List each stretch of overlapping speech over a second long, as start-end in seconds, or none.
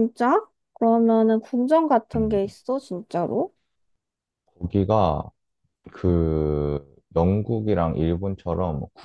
none